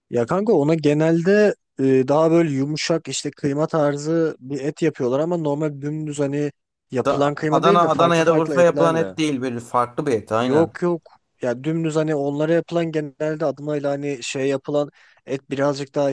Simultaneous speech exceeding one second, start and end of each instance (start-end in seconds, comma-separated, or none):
7.0-9.1